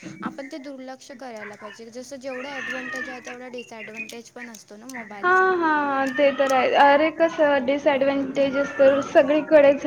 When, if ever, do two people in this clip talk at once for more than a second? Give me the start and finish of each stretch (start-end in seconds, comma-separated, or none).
none